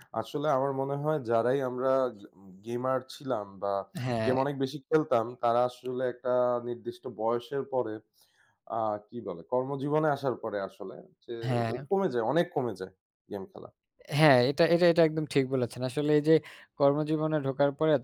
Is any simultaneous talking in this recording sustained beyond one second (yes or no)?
no